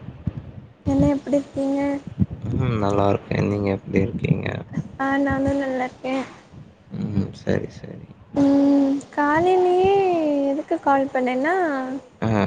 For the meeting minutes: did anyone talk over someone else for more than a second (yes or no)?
no